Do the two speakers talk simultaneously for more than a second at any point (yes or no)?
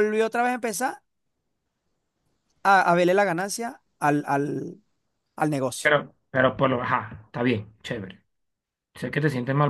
no